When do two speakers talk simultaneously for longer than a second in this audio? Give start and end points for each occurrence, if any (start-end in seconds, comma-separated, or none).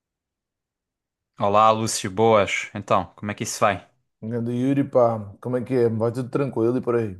none